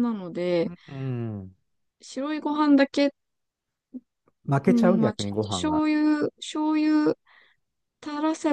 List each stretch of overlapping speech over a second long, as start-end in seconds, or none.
4.6-5.8